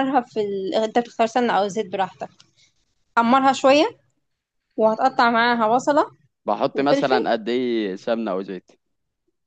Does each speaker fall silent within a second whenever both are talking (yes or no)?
yes